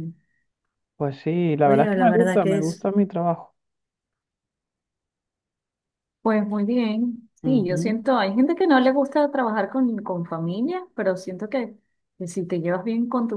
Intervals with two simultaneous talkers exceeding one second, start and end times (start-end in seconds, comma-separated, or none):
1.6-2.9